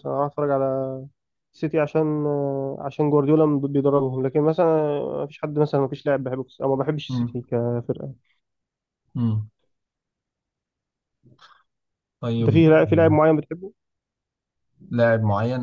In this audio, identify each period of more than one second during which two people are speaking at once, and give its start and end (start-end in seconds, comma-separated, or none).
none